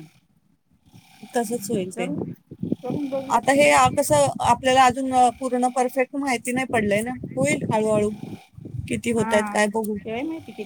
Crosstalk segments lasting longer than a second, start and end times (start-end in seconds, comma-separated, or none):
none